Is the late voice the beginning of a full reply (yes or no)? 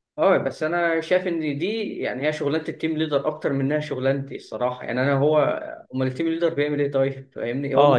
yes